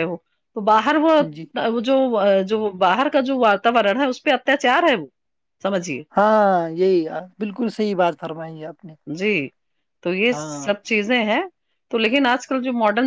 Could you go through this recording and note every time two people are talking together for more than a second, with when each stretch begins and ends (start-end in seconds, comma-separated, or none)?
none